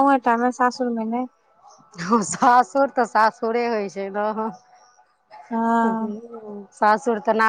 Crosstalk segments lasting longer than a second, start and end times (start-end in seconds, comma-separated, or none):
none